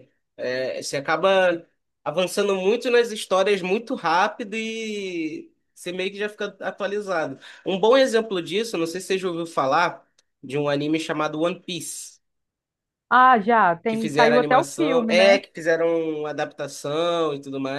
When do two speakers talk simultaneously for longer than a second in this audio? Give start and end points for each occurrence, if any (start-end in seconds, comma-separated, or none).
13.9-15.4